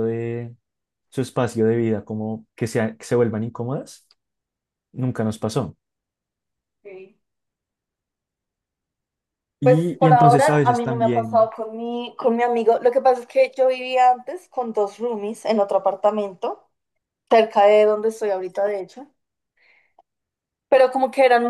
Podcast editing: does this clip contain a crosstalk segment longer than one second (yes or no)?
yes